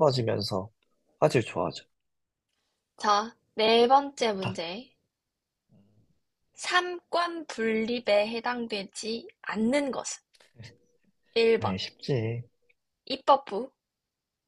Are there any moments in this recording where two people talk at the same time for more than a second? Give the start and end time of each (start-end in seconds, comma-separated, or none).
none